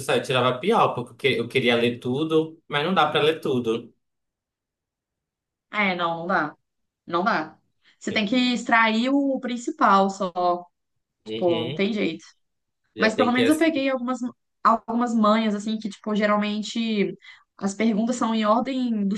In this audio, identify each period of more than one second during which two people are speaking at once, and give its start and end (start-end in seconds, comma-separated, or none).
none